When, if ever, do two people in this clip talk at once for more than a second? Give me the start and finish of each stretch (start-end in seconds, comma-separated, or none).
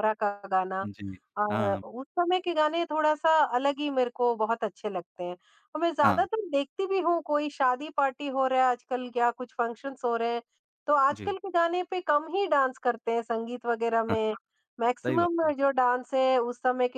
none